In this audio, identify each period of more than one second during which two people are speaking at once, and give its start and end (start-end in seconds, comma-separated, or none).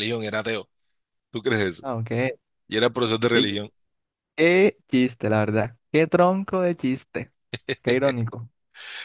none